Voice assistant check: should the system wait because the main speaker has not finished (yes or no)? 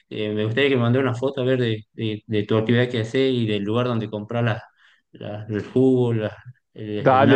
no